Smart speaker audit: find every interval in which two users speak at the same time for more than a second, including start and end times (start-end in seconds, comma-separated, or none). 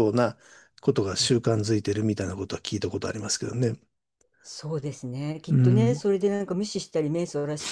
none